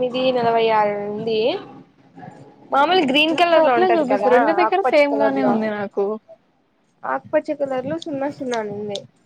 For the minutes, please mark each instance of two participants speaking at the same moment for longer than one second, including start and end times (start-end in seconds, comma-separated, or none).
3.4-5.5